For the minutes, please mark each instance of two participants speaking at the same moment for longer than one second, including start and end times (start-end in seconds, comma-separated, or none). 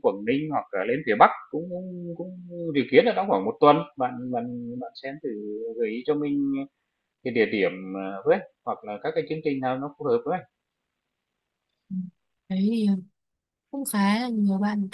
none